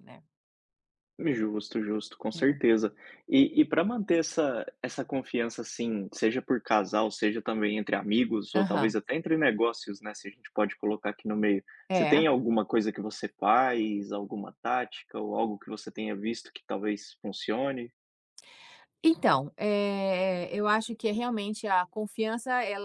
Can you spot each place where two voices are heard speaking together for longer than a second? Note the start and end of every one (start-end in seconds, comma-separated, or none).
none